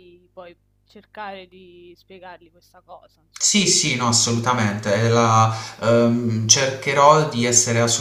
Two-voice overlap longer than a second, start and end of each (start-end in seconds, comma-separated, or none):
none